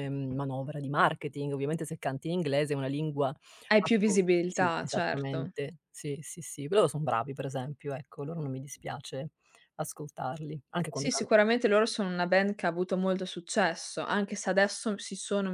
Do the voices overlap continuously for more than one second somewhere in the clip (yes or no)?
yes